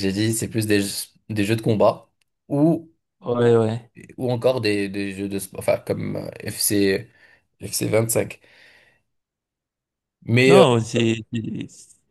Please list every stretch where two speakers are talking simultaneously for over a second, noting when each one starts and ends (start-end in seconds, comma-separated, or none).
none